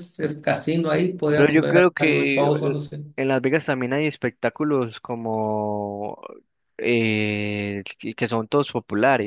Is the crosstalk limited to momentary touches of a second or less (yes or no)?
no